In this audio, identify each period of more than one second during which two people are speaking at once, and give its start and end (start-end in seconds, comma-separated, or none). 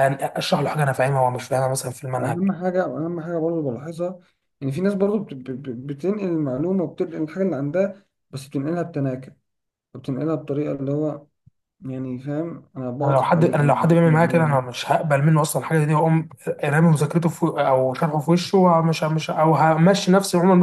13.0-14.7